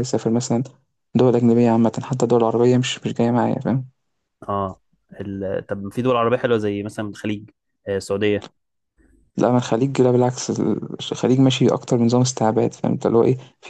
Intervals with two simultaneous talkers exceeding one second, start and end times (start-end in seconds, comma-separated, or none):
none